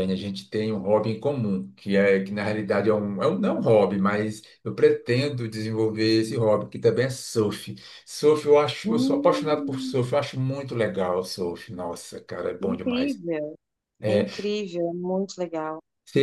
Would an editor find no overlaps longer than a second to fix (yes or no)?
no